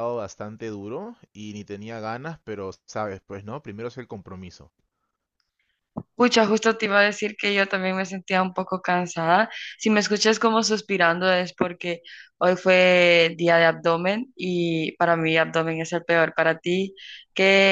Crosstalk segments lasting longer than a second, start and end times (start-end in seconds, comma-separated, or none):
none